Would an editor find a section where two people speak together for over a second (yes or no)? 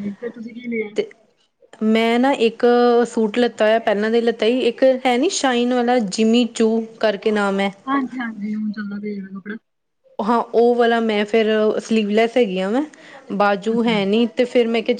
no